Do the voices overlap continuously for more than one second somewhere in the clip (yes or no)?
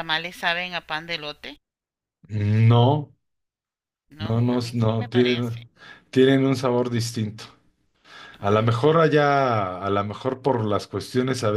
yes